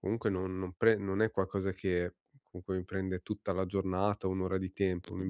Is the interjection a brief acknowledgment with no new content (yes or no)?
yes